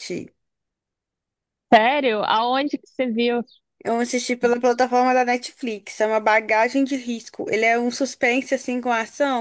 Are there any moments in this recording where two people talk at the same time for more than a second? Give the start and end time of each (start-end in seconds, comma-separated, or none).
none